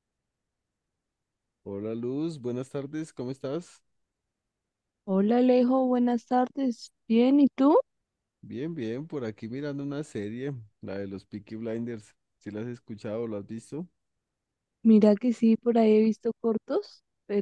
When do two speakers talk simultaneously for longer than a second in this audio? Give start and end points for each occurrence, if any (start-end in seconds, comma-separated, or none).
none